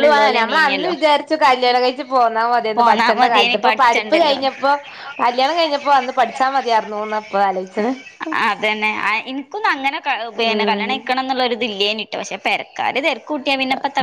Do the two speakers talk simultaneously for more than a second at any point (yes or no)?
yes